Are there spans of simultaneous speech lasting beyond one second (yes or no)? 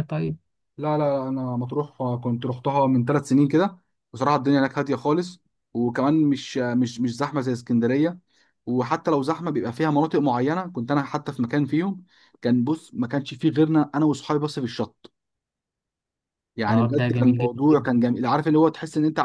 yes